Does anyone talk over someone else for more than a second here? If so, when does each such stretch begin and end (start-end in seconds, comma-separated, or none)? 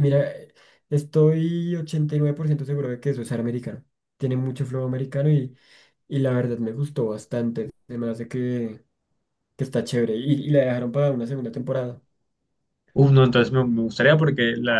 none